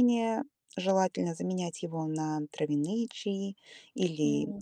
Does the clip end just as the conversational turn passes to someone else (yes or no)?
no